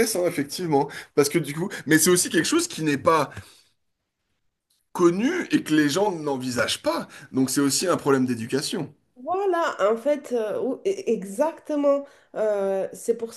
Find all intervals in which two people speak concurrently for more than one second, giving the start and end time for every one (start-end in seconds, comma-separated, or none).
none